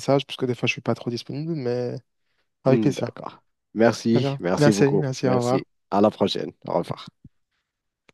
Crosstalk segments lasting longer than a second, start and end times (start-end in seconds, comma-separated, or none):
4.1-5.6